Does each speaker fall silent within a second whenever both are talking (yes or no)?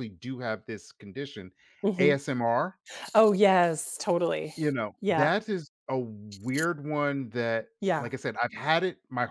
yes